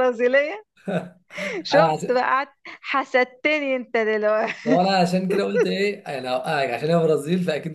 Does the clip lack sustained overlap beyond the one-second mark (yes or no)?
yes